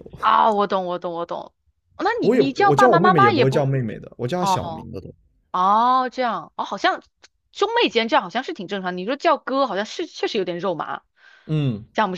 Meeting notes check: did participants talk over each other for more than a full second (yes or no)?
yes